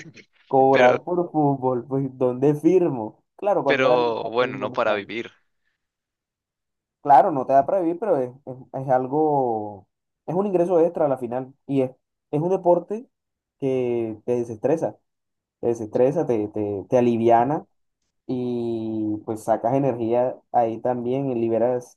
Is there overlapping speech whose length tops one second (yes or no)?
yes